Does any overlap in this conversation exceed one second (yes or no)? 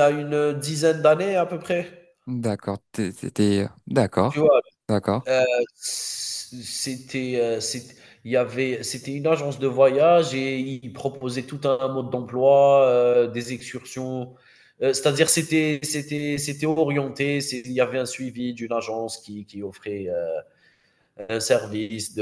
no